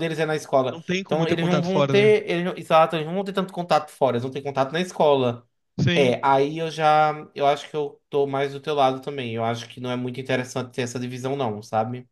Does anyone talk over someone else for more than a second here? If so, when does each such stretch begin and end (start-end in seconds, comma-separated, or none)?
0.7-2.2